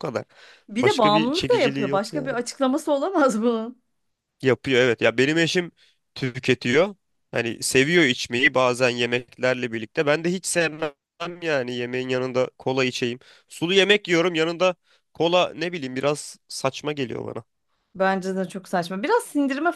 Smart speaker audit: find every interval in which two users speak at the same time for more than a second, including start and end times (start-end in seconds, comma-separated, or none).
0.8-2.3